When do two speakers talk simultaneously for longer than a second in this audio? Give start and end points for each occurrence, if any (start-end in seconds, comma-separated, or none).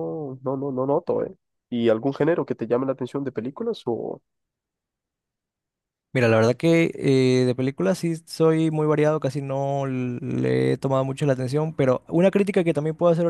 none